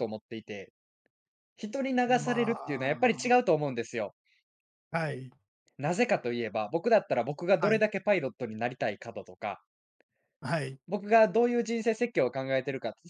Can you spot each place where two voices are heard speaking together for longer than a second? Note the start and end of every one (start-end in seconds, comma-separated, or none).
2.1-3.4